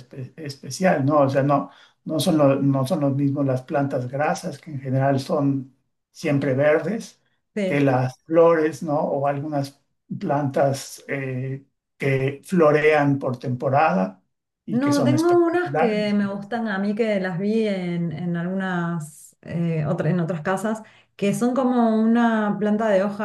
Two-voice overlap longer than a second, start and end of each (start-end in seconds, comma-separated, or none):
14.7-16.6